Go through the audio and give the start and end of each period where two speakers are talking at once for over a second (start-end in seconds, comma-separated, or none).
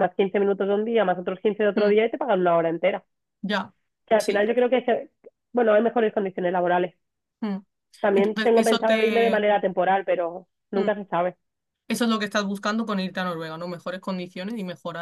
8.2-9.4